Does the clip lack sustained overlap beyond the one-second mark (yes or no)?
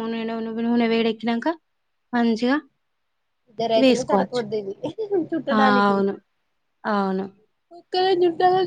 yes